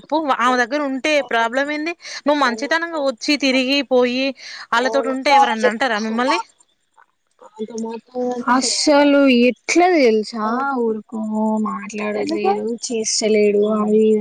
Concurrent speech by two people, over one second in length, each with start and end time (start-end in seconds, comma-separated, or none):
4.8-6.4